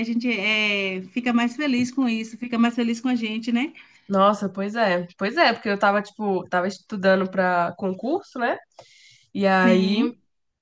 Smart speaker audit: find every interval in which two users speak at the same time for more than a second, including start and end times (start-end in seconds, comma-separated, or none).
none